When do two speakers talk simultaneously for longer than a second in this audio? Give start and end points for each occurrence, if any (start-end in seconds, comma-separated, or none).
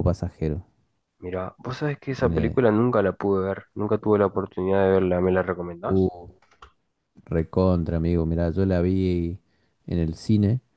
none